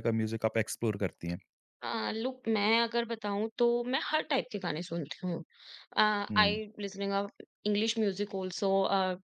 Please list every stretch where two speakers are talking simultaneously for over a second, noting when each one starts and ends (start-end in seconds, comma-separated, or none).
none